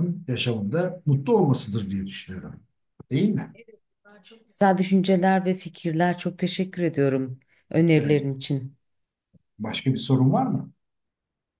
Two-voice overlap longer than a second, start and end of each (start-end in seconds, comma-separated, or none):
none